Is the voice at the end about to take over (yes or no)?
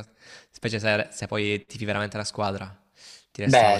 yes